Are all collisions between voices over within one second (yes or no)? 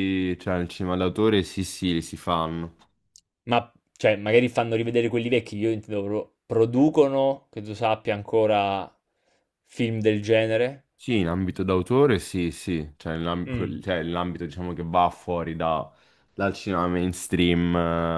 yes